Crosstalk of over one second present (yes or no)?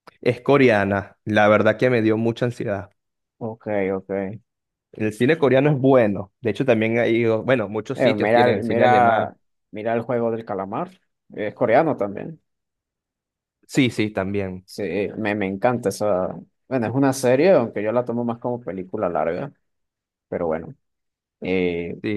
yes